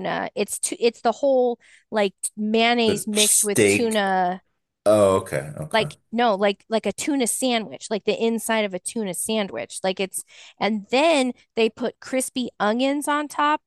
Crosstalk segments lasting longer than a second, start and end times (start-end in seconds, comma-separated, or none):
2.9-4.1